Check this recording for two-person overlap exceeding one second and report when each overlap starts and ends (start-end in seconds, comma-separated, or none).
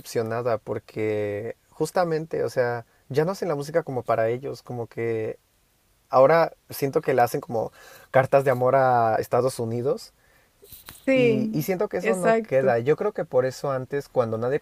11.2-12.7